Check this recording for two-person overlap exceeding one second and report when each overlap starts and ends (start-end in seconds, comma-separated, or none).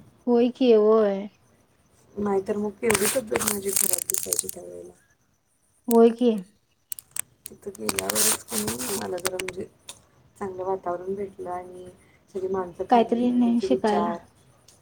12.9-14.1